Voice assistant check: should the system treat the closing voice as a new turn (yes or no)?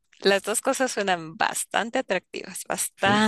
yes